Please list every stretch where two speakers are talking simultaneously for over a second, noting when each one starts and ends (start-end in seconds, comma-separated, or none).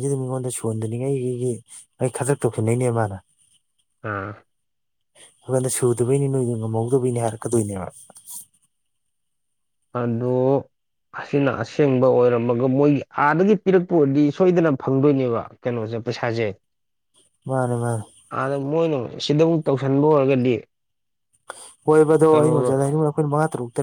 none